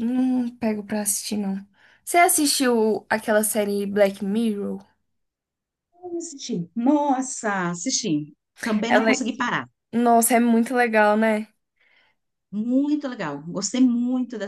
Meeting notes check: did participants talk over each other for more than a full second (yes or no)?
no